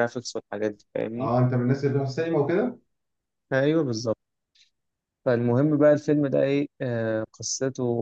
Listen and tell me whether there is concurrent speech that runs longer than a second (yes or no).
no